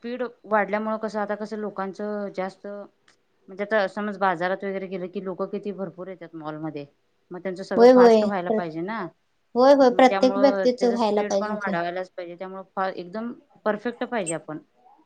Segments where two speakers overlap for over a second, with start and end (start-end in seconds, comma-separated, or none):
9.9-11.7